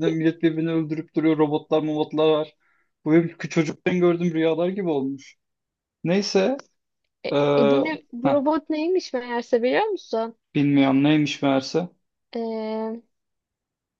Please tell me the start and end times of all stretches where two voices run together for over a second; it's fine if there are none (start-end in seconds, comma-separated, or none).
none